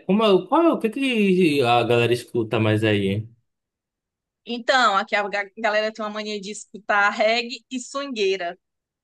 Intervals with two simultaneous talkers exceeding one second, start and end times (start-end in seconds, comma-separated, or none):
none